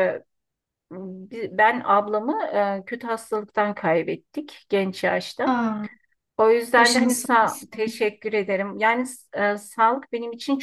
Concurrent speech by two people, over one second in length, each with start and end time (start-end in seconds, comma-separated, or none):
6.8-8.0